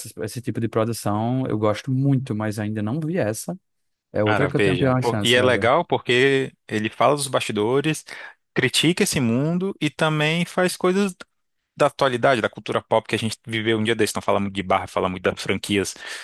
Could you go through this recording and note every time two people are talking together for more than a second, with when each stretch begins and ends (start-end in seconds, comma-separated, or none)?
4.2-5.7